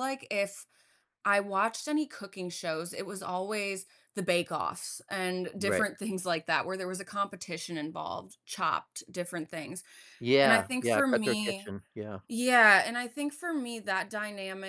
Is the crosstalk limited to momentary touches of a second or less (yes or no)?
no